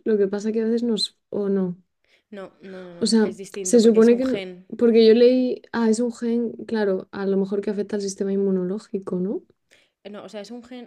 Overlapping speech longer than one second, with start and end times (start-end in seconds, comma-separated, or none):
3.0-4.7